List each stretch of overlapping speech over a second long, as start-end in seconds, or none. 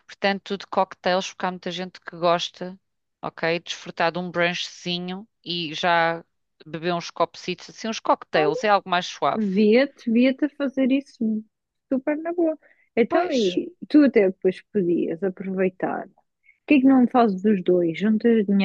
none